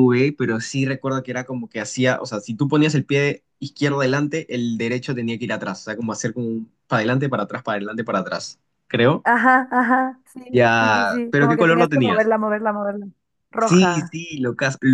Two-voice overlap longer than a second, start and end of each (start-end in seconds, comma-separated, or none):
10.5-12.3